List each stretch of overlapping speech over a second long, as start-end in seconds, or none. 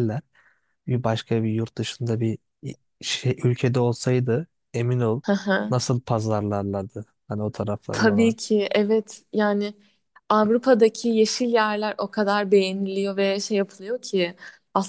none